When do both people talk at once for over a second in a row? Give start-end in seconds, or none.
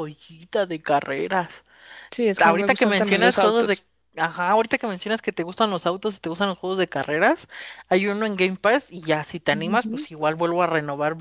2.4-3.8